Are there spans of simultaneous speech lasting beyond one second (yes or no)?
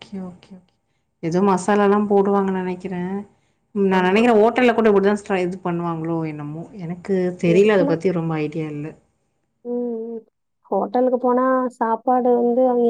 no